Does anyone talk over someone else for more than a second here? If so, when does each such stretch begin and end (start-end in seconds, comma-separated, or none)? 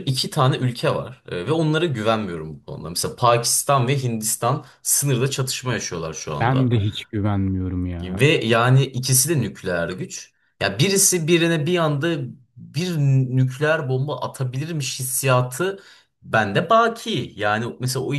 none